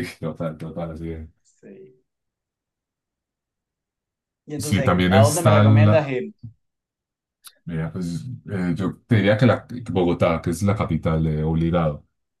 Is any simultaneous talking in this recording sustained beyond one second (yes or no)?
yes